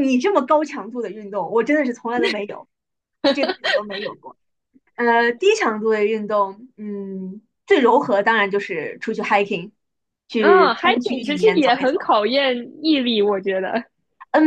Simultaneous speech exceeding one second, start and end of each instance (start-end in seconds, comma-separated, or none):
10.4-12.0